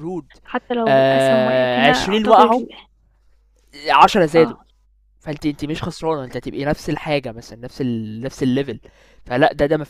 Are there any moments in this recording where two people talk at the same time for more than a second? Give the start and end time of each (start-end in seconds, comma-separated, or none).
0.9-2.6